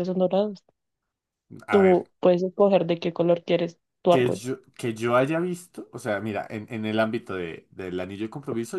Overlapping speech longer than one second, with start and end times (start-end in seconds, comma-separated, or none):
none